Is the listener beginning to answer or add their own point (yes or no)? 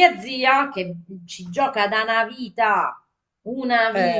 no